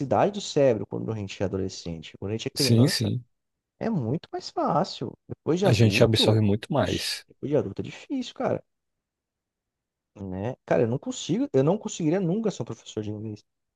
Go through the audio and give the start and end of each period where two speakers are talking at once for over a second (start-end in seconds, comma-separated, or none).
5.7-7.2